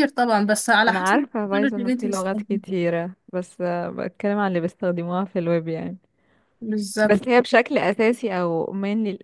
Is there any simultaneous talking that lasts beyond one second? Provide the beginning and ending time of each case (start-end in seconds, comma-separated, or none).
0.9-2.6